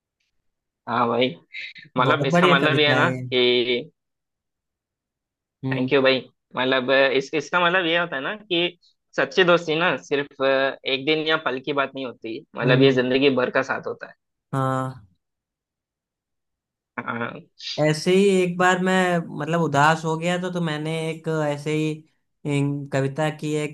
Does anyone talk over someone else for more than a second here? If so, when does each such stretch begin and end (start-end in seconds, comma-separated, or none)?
2.1-3.3